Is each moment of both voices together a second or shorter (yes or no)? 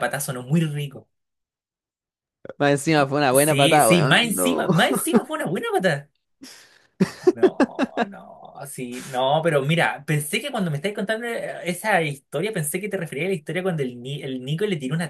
no